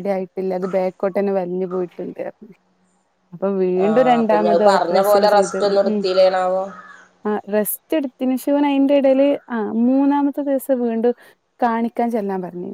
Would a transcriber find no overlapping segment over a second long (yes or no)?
no